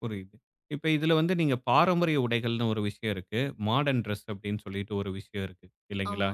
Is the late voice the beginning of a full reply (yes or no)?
no